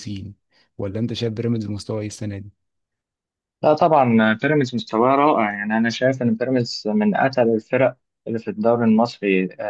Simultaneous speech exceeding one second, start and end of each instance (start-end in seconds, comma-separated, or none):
none